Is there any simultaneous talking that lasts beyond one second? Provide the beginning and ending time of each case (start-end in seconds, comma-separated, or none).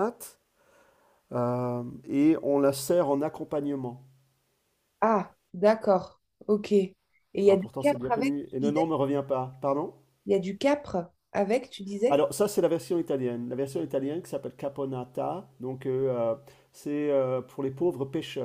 7.5-8.9